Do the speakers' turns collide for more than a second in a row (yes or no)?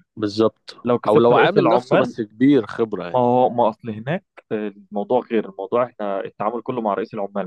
yes